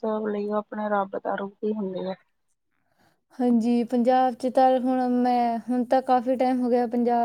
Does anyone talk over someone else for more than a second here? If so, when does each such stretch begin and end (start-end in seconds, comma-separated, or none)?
none